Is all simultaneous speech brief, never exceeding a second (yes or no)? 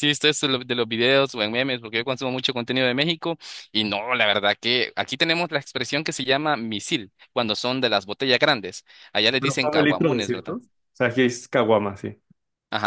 no